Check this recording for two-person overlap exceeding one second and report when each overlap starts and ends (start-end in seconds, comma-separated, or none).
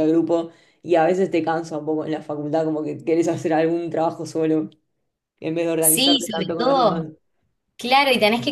5.8-7.1